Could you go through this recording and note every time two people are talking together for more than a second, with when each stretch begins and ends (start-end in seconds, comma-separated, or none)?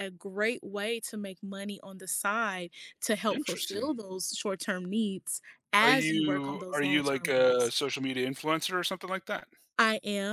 5.8-7.7